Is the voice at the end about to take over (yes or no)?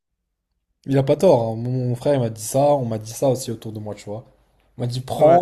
no